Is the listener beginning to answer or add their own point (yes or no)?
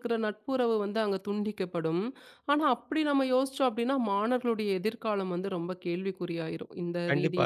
yes